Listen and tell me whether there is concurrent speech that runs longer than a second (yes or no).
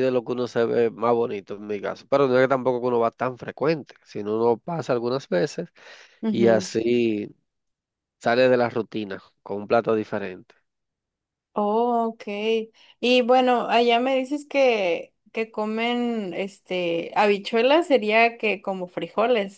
no